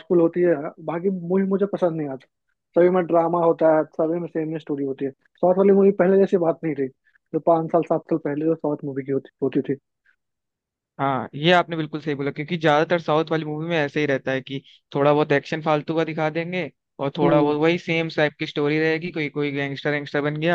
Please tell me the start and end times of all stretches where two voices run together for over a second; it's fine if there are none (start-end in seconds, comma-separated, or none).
none